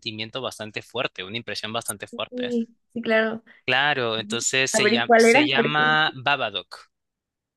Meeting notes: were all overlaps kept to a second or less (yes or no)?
no